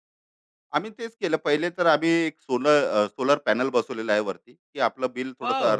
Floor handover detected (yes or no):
yes